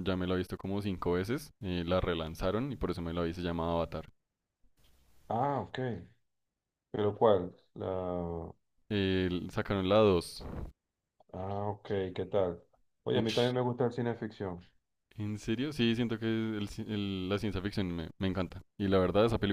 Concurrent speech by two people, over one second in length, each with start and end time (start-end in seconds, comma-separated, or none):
none